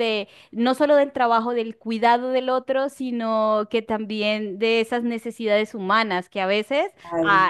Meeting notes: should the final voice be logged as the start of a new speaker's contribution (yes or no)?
no